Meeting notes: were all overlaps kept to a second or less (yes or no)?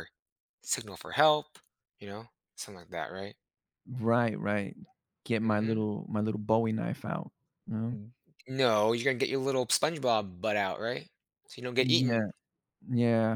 yes